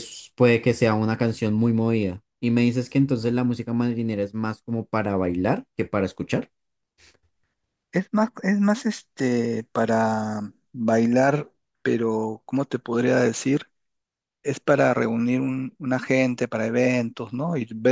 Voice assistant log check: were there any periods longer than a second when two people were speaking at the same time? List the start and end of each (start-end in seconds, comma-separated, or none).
none